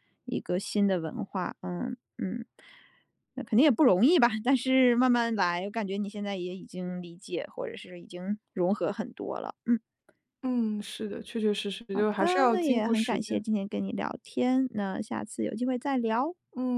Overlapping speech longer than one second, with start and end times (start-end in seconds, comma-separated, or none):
11.9-13.4